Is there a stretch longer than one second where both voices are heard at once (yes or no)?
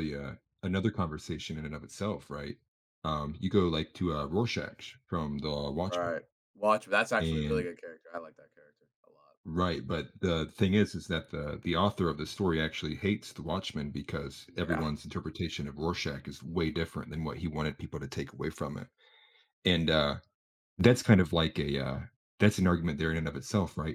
no